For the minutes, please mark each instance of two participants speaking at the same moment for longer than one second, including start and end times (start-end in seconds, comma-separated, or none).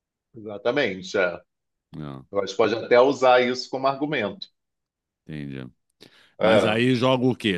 none